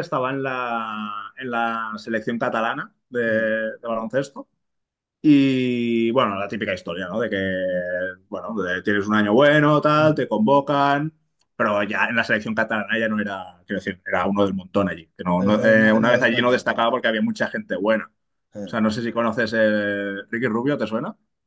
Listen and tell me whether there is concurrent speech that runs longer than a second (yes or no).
yes